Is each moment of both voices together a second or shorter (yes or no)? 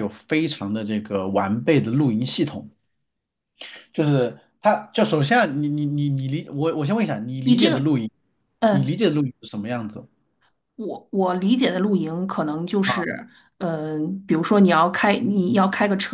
yes